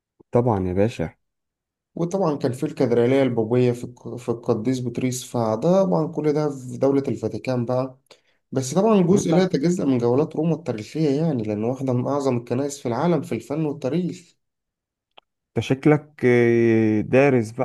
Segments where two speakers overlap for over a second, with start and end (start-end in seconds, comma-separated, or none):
none